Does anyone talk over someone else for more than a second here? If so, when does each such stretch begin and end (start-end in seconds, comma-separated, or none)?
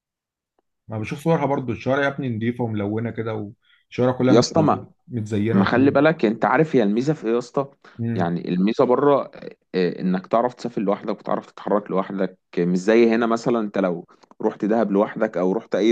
none